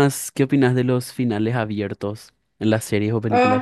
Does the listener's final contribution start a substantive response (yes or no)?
yes